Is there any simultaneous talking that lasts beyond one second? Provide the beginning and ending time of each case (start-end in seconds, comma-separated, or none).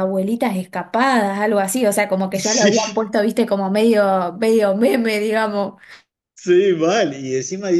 none